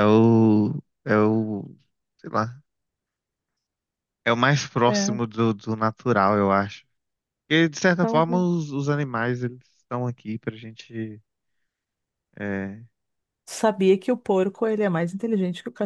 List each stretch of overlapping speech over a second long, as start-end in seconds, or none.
none